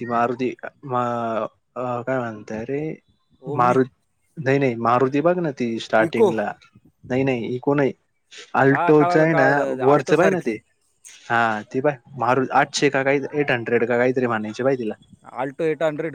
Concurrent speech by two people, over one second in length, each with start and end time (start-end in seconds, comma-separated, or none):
8.7-10.6